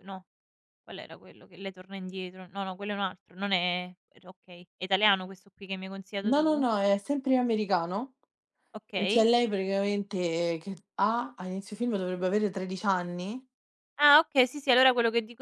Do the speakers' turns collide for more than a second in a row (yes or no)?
no